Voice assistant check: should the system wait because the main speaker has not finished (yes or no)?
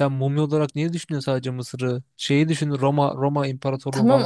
no